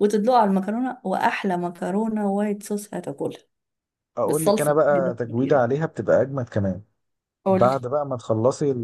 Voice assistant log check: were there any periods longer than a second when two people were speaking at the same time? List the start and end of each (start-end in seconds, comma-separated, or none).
4.2-5.7